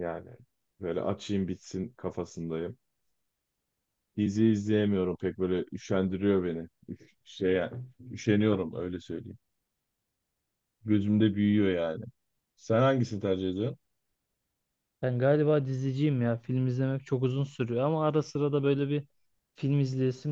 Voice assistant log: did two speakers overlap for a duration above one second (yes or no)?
no